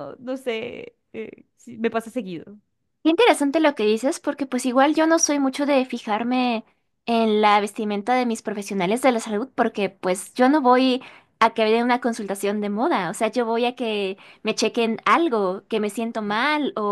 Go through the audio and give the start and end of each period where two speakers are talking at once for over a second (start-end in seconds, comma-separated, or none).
none